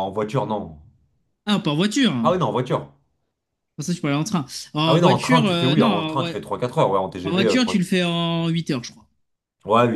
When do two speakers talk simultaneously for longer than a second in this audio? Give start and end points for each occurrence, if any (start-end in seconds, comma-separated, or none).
4.8-6.3